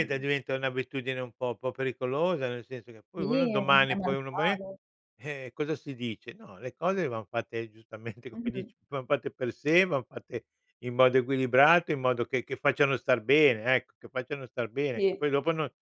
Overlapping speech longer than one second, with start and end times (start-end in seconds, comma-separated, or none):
3.2-4.6